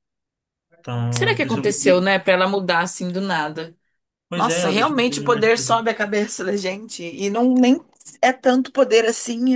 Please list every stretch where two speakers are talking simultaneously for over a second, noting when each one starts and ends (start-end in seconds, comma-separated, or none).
0.8-2.0, 4.3-5.8